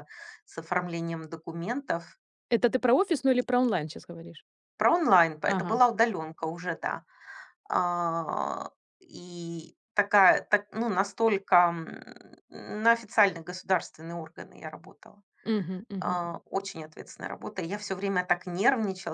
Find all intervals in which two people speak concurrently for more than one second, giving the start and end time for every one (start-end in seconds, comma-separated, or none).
none